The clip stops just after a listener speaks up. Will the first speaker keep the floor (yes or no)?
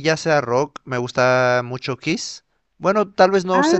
yes